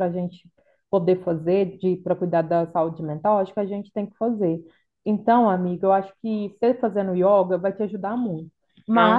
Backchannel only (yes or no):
yes